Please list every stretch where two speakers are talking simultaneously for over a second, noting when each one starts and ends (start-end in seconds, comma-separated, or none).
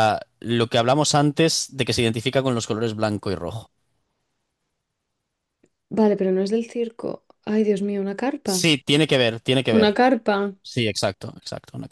none